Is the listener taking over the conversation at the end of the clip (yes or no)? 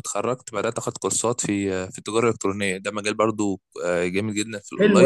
yes